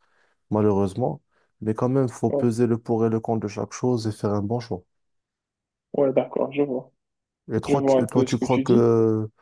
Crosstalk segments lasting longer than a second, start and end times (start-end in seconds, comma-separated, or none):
7.7-8.9